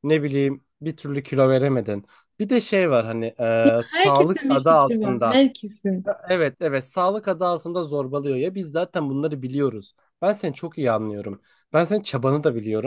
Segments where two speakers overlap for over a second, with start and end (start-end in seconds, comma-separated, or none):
3.8-5.4